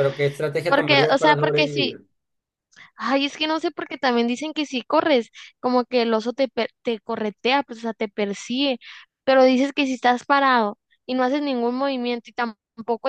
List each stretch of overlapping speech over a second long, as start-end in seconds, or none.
0.7-2.0